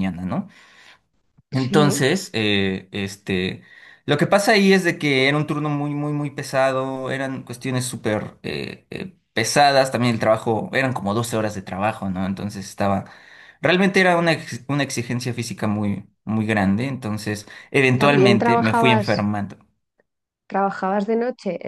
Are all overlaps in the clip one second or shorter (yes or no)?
no